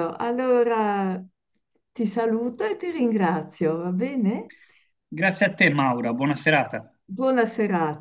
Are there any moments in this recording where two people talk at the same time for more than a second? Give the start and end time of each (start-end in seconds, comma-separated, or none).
none